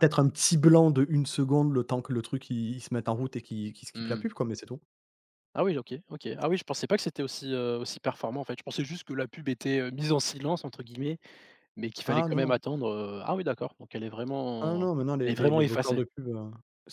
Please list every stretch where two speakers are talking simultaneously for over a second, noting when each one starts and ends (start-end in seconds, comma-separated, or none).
14.6-16.0